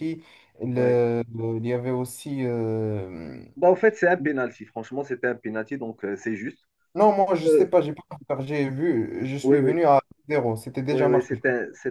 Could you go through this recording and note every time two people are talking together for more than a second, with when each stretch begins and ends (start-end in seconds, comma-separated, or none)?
none